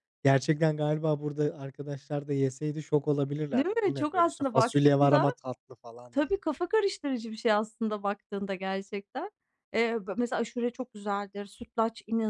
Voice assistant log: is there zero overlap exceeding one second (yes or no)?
no